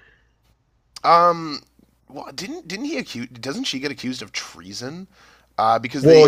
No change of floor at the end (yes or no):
yes